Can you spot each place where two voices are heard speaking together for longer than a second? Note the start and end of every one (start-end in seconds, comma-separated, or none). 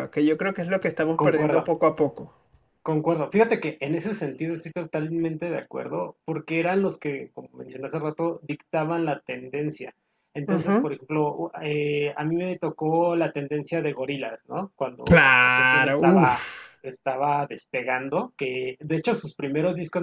15.0-16.5